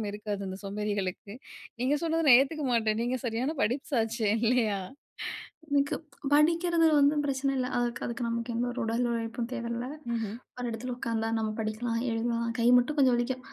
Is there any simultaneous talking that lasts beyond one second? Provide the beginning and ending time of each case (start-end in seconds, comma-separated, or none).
none